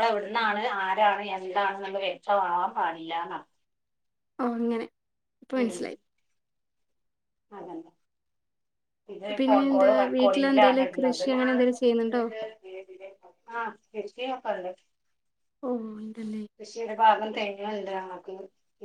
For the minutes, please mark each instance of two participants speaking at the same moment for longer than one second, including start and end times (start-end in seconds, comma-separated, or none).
9.4-11.2